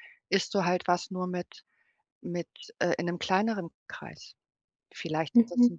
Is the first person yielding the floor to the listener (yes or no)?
no